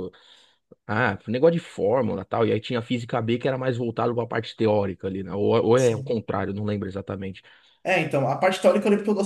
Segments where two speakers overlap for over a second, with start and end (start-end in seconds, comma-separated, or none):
none